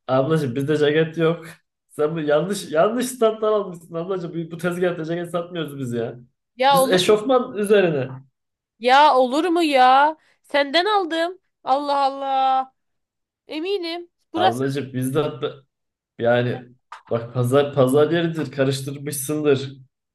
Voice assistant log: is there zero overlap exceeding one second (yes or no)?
yes